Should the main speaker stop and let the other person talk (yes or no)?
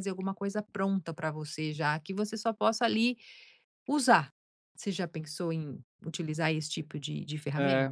yes